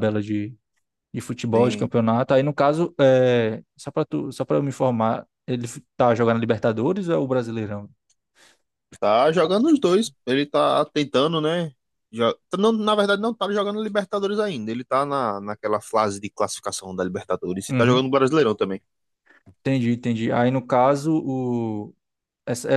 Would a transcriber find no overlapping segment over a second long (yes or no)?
yes